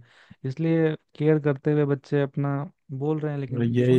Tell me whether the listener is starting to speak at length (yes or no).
yes